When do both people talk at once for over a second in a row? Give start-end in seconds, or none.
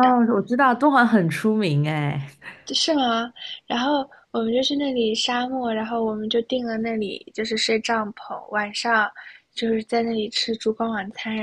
none